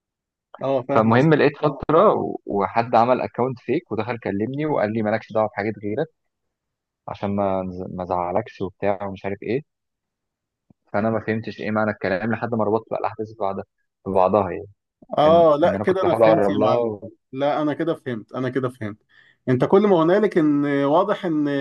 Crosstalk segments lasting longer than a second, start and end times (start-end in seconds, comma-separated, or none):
15.2-16.9